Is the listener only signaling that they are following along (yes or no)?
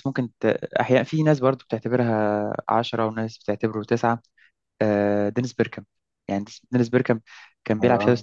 yes